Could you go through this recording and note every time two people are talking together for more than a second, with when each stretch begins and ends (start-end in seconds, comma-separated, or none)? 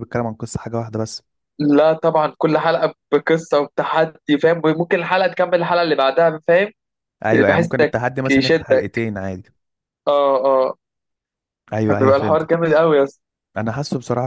7.5-9.1